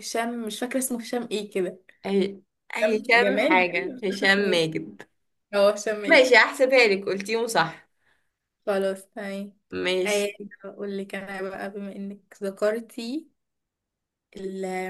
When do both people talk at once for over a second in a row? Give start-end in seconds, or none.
2.8-4.6